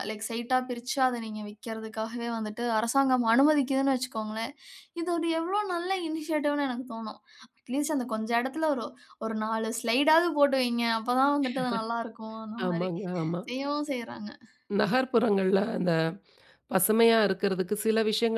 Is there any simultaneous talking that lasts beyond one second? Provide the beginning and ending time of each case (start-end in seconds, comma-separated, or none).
none